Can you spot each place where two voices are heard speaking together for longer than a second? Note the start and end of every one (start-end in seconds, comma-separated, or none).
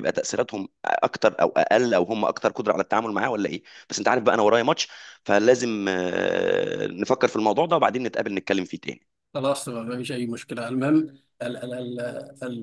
none